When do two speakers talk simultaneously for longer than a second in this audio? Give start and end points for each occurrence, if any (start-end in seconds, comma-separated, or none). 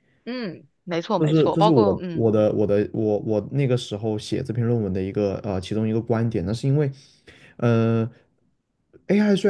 1.2-2.4